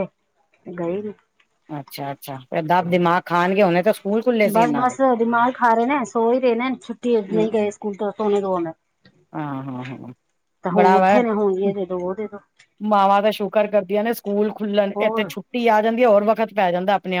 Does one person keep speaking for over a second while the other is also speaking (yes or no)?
no